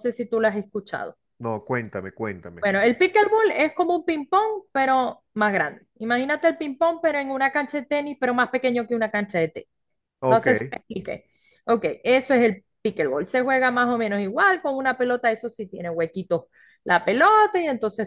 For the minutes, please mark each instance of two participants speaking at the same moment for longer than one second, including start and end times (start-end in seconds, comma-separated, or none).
none